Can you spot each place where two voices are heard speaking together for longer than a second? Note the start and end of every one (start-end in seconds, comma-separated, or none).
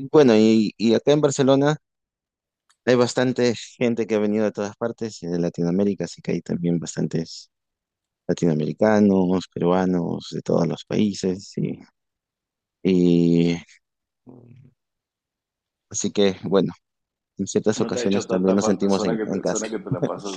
17.8-19.7